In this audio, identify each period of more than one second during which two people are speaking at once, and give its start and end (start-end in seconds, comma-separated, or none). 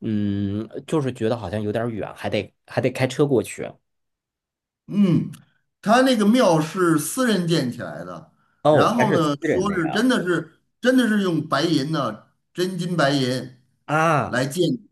8.7-10.1